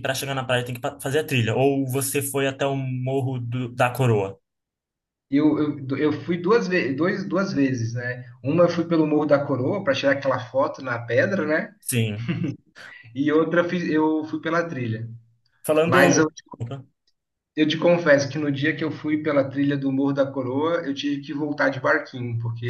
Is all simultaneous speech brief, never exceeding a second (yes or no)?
yes